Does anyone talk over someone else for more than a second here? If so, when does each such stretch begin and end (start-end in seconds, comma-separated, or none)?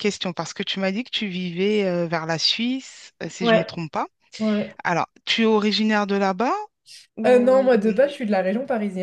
none